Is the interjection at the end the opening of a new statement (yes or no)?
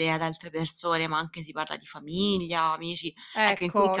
yes